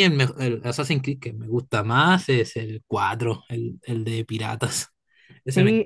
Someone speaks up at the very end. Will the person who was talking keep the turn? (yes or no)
no